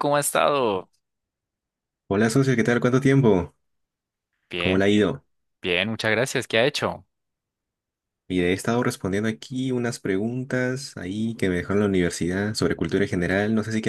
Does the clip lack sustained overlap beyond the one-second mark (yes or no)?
yes